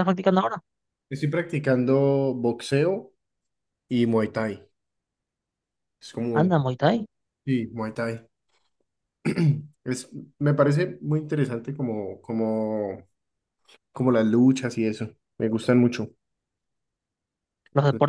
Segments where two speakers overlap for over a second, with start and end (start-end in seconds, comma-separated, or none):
none